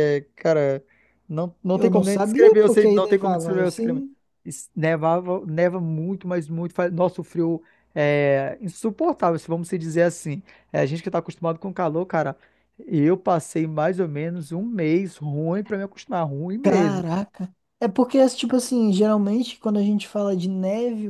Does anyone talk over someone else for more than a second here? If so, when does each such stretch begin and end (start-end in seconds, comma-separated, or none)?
1.7-4.0